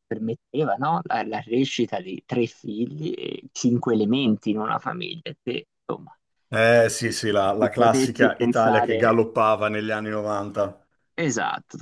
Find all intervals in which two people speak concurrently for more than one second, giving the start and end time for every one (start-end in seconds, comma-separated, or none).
7.6-9.2